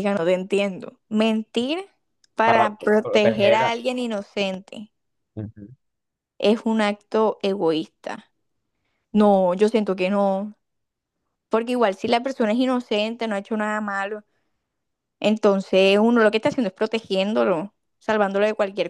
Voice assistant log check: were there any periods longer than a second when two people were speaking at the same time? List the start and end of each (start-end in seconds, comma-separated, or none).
2.4-3.7